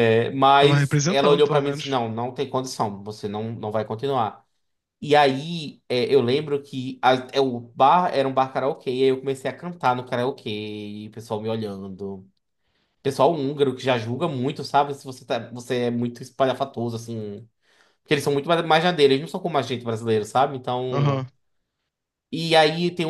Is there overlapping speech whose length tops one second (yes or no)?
yes